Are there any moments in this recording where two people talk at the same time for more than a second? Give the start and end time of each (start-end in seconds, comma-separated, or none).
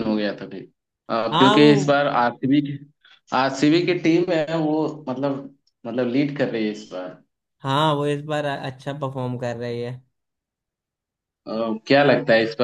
none